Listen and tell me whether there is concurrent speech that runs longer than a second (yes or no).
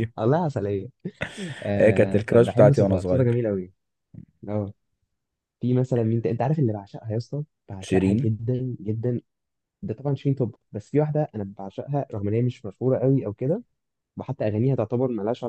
yes